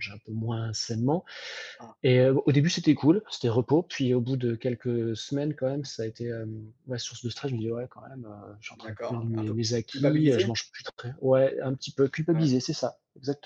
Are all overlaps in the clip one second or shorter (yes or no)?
no